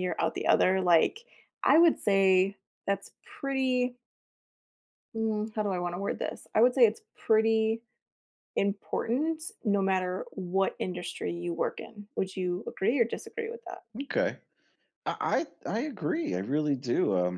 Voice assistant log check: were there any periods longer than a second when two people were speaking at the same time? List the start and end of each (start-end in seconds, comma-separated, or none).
none